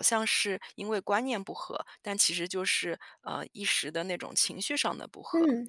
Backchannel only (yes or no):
no